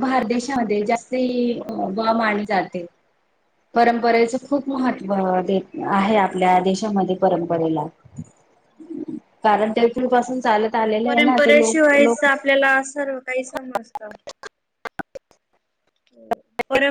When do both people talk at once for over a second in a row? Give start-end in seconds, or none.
11.0-12.3